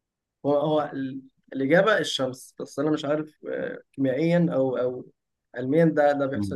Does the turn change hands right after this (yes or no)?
yes